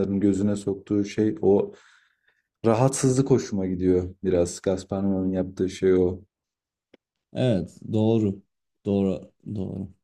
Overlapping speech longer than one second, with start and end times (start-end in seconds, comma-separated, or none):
none